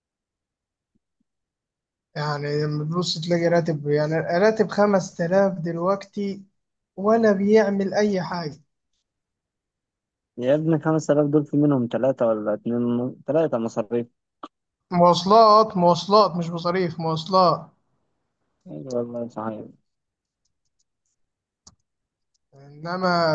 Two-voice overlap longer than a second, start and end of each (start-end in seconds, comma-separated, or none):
none